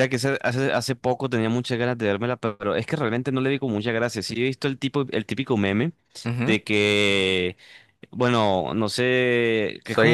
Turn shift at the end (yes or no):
no